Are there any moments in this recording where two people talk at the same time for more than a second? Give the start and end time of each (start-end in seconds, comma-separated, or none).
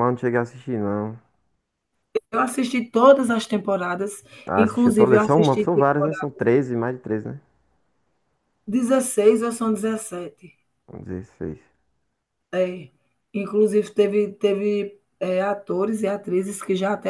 4.5-6.3